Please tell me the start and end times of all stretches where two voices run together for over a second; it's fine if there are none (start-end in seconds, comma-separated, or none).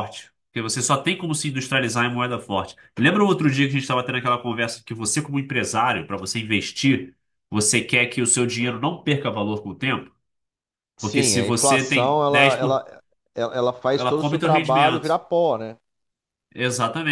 11.0-12.8, 14.0-15.2